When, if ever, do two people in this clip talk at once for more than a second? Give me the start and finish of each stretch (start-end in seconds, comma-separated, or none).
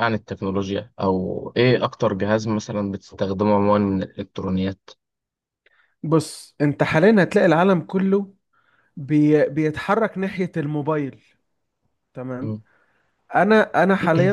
none